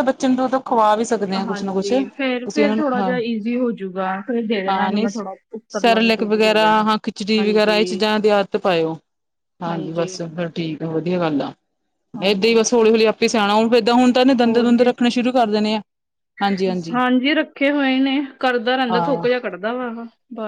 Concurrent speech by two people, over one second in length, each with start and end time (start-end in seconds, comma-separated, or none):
1.5-3.1